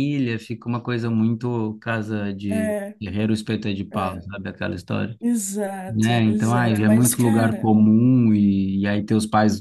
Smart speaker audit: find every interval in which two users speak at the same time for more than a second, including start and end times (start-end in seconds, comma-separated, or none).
5.9-7.7